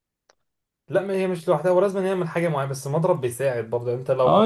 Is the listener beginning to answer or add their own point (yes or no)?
yes